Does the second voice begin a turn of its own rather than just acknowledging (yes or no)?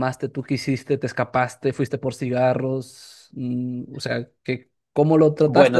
yes